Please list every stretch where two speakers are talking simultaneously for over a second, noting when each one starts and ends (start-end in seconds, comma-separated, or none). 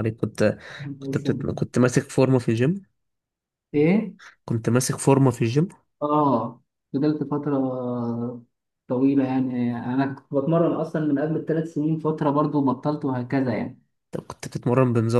none